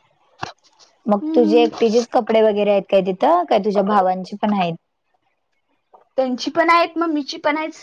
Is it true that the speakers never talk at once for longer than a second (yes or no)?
yes